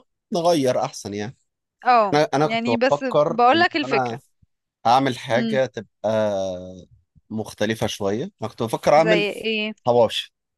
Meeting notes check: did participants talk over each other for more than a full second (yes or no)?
yes